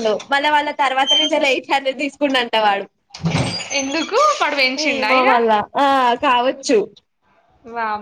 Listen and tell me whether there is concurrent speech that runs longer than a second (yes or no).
no